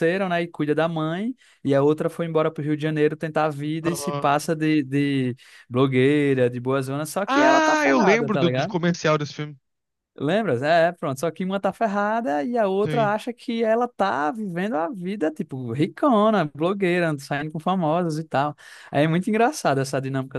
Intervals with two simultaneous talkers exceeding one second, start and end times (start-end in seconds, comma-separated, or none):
7.2-8.8